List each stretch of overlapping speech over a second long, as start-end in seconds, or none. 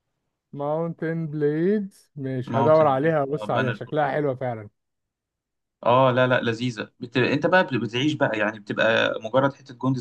2.5-4.0